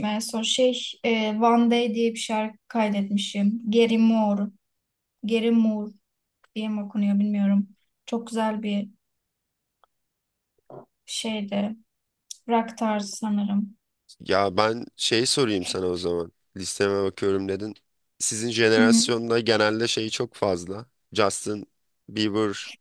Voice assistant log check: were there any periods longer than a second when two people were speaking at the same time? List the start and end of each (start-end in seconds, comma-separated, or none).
none